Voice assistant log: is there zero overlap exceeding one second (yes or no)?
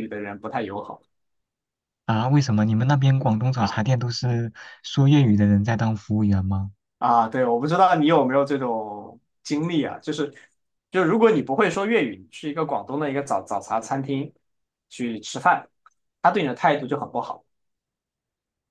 yes